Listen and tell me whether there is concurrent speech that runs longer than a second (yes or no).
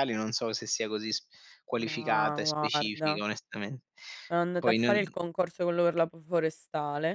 yes